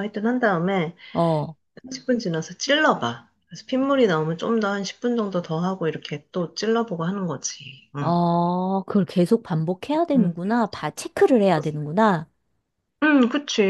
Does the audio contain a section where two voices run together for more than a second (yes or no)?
no